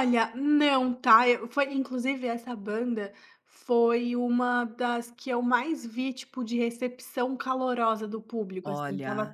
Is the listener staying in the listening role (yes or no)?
yes